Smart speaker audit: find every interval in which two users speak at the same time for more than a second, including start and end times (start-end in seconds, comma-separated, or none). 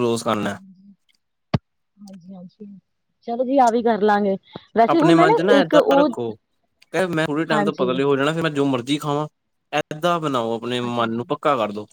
none